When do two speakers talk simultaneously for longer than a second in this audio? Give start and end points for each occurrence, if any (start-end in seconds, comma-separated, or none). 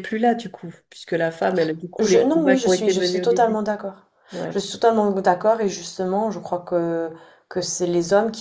2.0-3.6